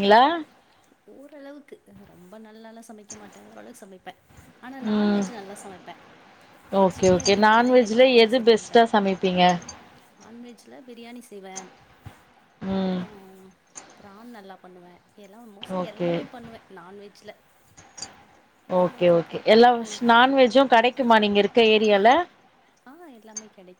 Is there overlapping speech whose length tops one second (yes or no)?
yes